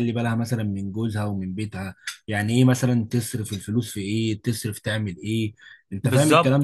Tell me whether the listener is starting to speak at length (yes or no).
yes